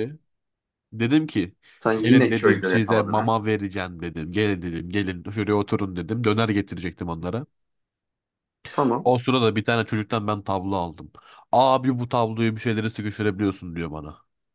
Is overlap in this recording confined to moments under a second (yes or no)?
no